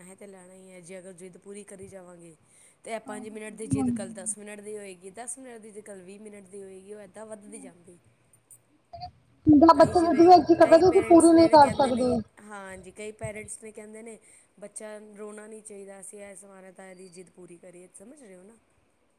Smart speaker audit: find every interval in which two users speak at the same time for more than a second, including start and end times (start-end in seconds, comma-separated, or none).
9.8-12.1